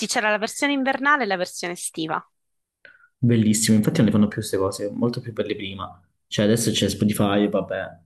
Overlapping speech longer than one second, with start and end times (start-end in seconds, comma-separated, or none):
none